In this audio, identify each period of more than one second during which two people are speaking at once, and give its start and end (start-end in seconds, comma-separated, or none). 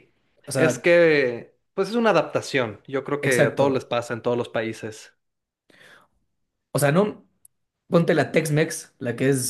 none